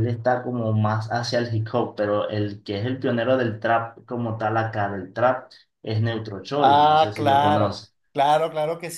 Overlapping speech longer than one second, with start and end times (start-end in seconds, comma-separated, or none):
6.6-7.9